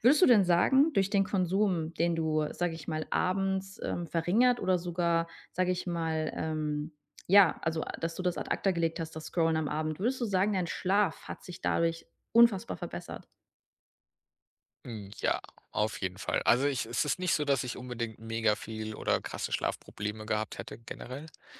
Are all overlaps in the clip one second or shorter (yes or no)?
yes